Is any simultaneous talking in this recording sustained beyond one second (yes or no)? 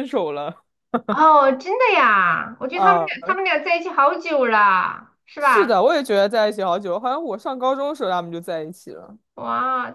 no